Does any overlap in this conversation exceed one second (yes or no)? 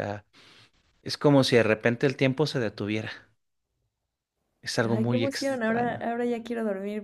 yes